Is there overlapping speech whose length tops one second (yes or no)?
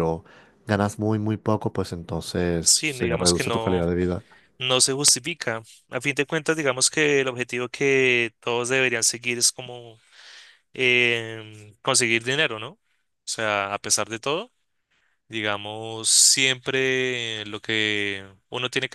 yes